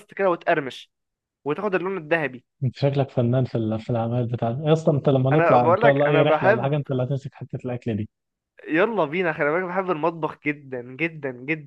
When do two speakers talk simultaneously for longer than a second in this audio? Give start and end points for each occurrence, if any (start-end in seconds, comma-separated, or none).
5.3-6.8